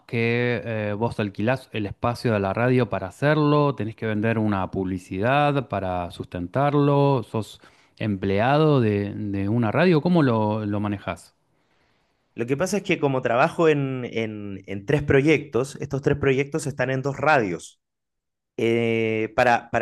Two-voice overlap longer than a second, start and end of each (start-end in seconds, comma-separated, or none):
none